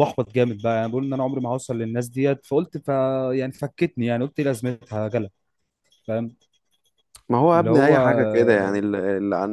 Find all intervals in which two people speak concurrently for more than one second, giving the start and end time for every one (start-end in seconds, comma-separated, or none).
none